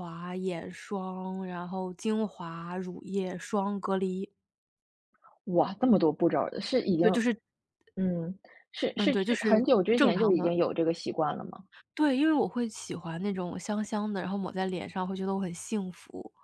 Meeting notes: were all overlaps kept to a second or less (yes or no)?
no